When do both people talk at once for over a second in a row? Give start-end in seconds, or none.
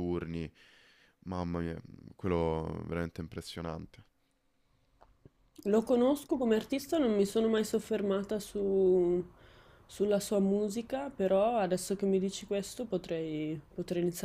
none